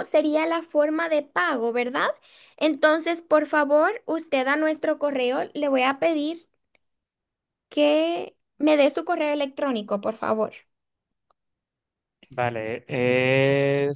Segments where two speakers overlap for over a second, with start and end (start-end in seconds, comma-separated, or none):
none